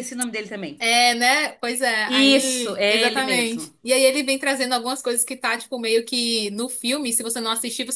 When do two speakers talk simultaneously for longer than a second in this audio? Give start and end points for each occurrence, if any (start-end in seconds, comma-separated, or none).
2.4-3.7